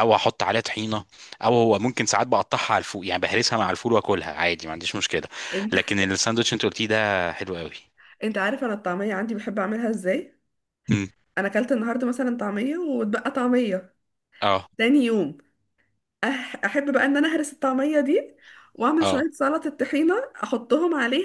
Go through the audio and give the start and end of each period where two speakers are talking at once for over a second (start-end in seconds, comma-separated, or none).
none